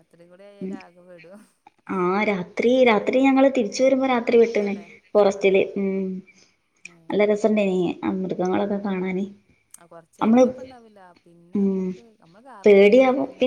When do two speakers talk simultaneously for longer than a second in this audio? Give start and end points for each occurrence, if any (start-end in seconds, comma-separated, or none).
none